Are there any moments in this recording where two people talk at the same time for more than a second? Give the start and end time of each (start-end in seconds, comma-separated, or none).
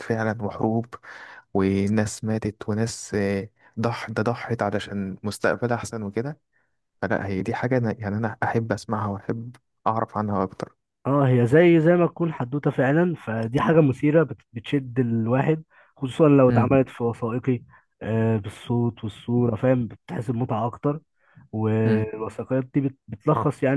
none